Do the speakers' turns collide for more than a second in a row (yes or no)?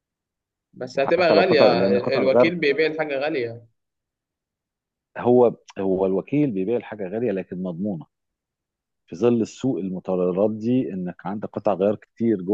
yes